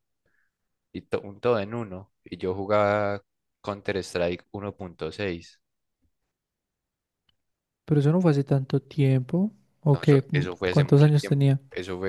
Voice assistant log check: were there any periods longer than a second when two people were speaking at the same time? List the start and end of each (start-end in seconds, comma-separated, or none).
9.9-11.6